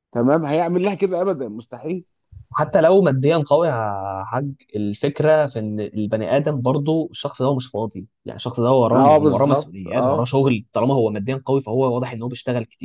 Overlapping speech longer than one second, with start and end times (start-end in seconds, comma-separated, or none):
8.9-10.3